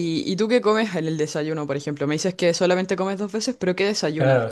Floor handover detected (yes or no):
yes